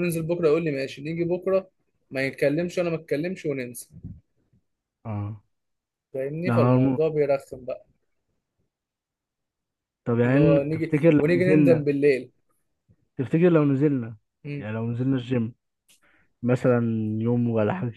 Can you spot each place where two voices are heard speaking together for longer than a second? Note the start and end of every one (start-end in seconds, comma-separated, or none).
10.2-11.8